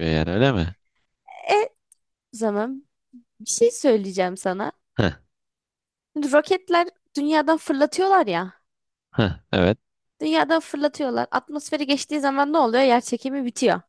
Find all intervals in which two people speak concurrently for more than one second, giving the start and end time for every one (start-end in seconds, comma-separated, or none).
none